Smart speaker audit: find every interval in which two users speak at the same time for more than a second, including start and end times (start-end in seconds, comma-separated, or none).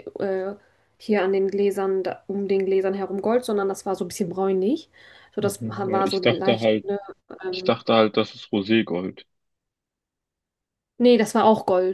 5.4-6.8